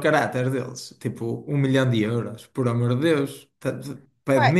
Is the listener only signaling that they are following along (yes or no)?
no